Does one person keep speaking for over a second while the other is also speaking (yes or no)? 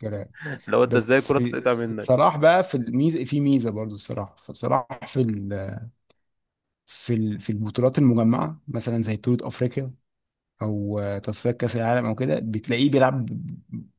yes